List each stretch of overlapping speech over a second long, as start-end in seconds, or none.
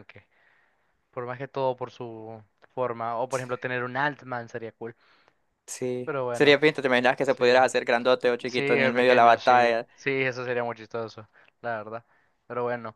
8.5-9.9